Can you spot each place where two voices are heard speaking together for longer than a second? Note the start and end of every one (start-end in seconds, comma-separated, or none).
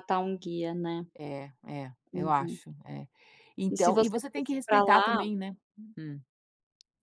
3.7-5.2